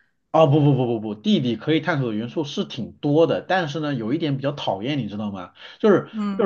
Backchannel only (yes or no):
yes